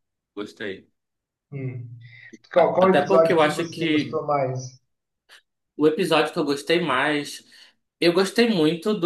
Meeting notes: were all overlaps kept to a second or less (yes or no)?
no